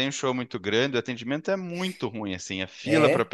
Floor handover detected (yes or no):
no